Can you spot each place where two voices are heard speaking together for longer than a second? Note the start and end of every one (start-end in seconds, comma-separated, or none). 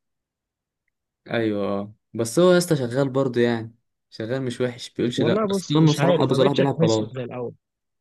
5.2-7.2